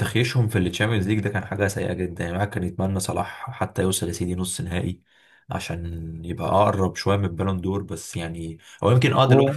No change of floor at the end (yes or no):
yes